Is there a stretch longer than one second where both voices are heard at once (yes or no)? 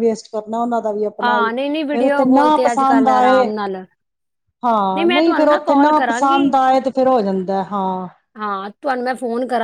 yes